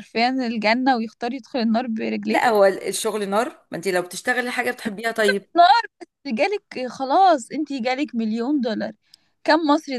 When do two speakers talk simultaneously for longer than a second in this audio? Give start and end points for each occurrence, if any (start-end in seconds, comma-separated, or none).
none